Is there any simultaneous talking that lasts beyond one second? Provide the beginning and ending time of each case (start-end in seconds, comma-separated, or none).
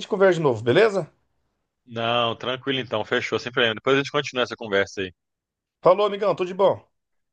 none